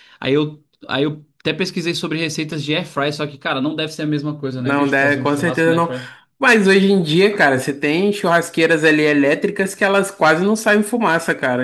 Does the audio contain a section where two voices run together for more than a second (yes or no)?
yes